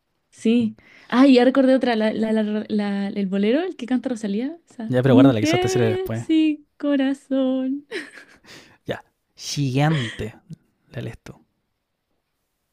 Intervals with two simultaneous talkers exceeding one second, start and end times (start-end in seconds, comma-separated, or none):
4.9-6.3